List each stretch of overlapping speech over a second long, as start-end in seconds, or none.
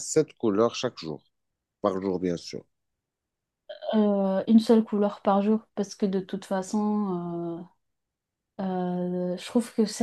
none